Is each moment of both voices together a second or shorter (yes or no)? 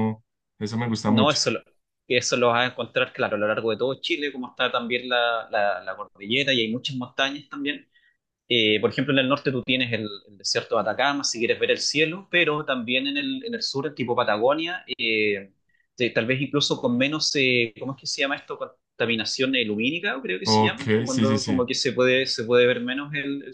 no